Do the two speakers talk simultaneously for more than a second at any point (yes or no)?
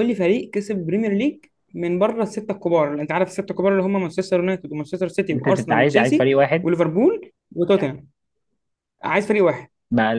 yes